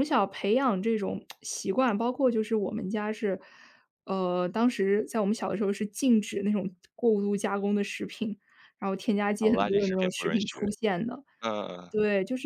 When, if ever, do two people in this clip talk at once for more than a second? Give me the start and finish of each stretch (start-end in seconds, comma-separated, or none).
9.4-10.6